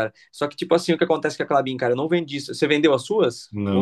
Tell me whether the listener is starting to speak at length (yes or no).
yes